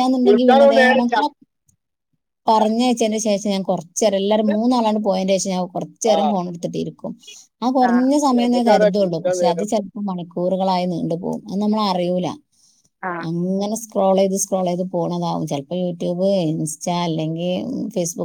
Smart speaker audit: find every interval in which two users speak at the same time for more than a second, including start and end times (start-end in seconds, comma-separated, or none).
7.9-9.7